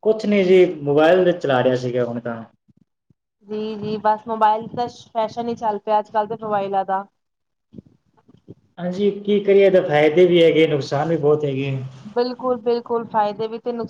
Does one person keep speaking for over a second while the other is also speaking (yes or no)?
no